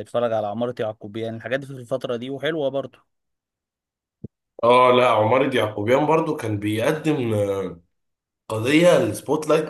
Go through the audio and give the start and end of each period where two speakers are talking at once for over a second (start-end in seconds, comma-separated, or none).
none